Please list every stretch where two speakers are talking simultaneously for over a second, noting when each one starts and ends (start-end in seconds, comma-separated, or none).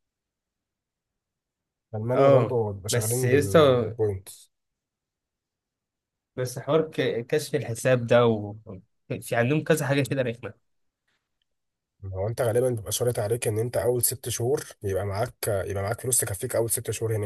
2.1-3.6